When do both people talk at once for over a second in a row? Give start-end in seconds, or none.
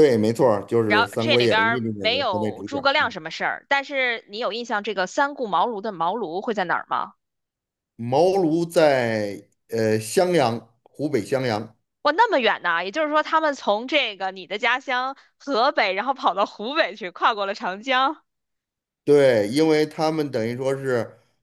0.9-3.1